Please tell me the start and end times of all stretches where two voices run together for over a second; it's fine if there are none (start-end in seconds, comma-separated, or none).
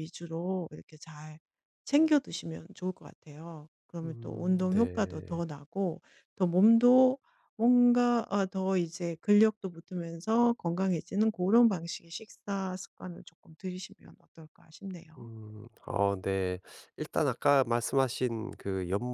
4.0-5.4